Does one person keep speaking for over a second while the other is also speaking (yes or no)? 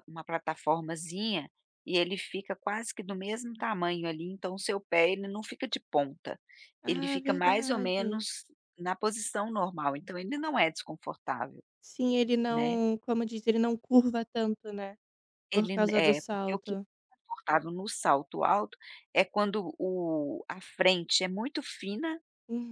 yes